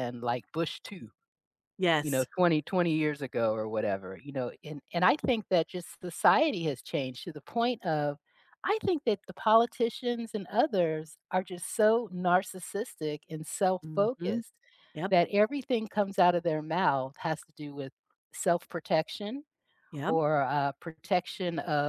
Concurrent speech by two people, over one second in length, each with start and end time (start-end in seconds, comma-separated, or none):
none